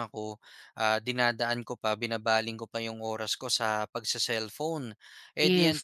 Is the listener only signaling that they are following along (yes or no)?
yes